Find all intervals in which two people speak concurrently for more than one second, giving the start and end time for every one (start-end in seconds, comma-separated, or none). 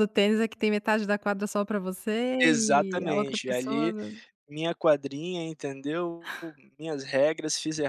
2.4-3.9